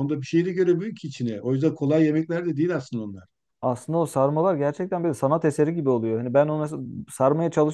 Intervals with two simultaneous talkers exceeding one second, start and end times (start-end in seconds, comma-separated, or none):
none